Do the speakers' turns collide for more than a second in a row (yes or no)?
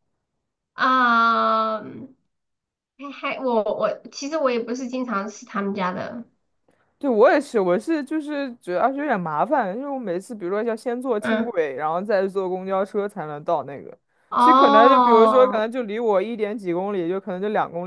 yes